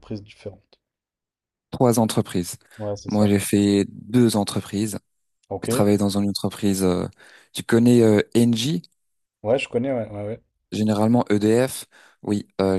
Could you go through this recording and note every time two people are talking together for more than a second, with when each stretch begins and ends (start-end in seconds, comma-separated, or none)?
none